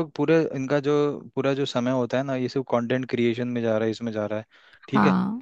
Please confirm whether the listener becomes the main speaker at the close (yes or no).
no